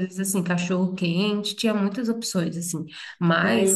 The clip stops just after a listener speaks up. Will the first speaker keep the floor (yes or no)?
yes